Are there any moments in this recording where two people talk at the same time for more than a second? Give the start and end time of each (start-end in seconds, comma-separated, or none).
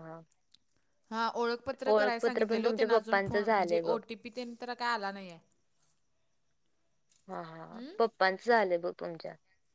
1.9-4.0